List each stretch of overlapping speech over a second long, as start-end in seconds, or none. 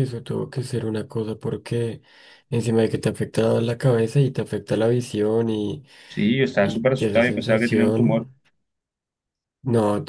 6.6-8.3